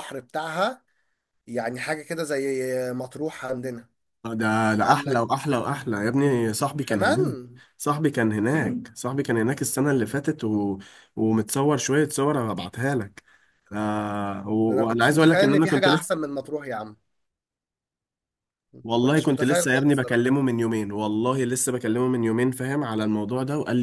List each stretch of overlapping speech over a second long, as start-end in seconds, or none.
14.7-16.3, 18.9-20.3